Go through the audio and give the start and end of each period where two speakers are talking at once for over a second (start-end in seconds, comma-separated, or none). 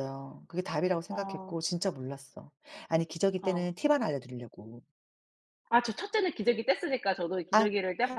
none